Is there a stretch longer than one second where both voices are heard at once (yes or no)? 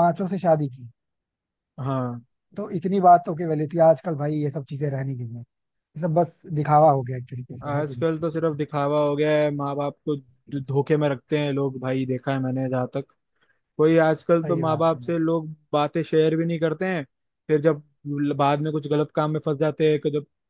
no